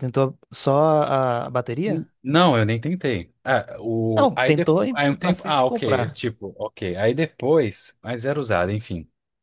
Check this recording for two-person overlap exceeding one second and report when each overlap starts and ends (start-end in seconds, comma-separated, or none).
4.1-6.2